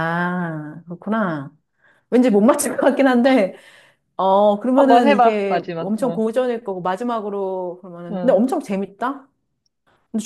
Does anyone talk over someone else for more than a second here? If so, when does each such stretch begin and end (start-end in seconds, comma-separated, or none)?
4.8-6.2